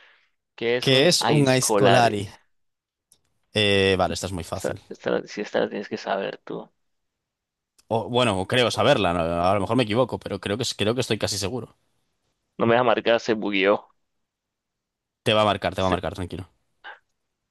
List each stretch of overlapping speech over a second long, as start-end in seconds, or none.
0.8-2.2